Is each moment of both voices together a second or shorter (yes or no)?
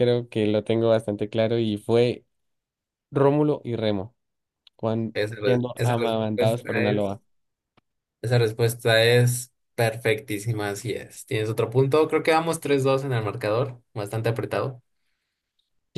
no